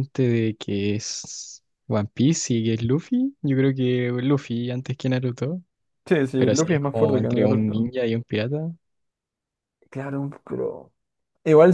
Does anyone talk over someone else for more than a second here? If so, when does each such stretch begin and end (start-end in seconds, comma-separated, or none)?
6.4-7.9